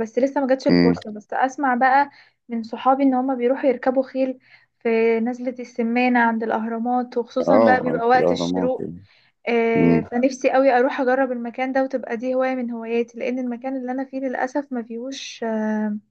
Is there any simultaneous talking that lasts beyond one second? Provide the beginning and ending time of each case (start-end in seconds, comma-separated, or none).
7.5-8.9